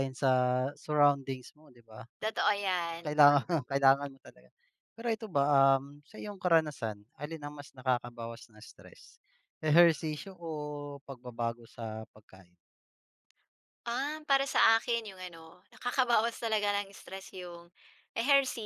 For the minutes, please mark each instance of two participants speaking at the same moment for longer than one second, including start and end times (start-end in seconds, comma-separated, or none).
none